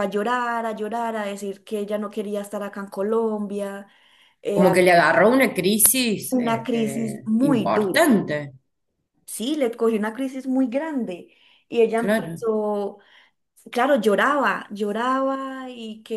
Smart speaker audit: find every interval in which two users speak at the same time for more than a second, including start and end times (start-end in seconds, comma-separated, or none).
6.3-8.1